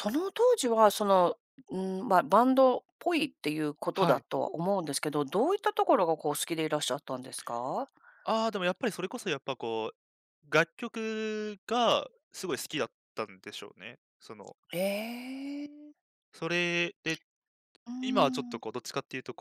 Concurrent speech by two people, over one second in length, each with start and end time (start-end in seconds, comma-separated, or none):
none